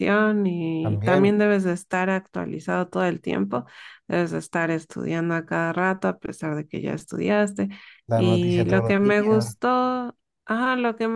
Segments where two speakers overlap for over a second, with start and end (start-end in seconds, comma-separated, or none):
8.1-9.5